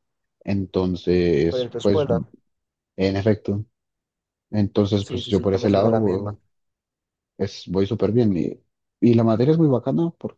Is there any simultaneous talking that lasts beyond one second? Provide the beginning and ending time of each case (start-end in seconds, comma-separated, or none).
5.0-6.4